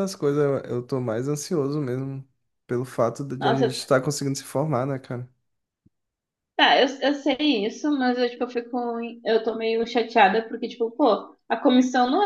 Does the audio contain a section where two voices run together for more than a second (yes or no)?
no